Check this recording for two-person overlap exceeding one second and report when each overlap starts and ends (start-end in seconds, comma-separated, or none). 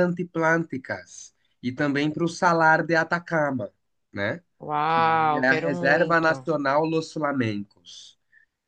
4.9-6.5